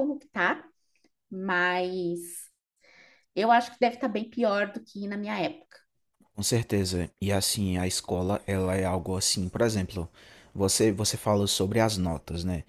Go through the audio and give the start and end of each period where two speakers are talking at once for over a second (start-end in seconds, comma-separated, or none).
none